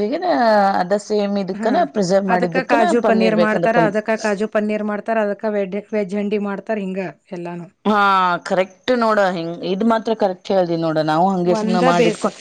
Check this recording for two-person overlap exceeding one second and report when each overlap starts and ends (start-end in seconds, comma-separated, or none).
2.3-4.0